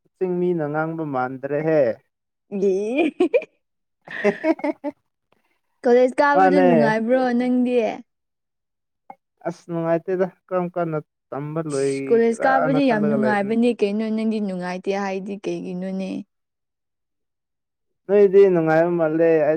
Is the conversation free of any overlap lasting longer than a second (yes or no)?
no